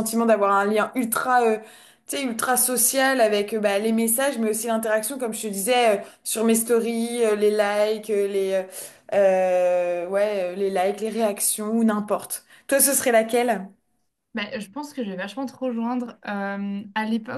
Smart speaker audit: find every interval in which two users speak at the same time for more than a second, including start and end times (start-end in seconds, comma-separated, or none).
none